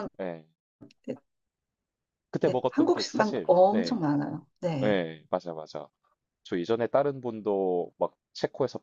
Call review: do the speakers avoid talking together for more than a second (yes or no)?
no